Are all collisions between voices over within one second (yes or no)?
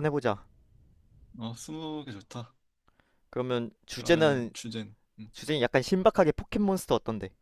yes